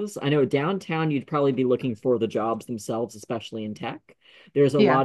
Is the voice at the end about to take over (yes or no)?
no